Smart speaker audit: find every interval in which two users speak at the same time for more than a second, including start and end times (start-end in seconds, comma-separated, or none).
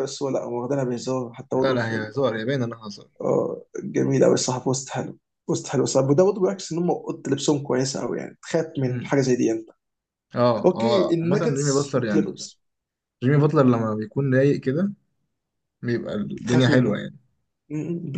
10.6-12.5